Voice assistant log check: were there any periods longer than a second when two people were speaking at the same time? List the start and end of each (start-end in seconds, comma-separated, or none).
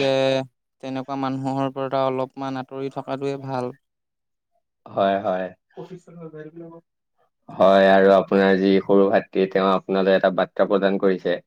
none